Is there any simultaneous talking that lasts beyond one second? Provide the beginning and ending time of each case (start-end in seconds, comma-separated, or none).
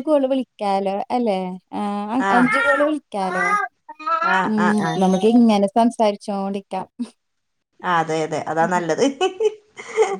none